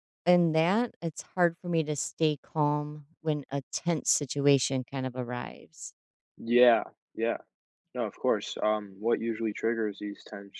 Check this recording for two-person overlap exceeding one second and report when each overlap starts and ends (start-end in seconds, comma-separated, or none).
none